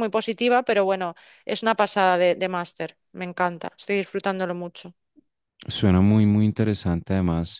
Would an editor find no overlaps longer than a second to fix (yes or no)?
yes